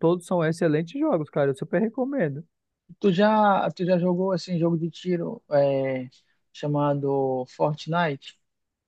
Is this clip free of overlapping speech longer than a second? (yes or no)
yes